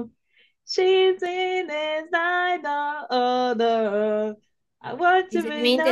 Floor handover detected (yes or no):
yes